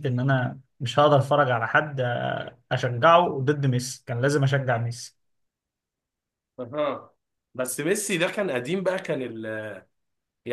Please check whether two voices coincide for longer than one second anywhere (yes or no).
no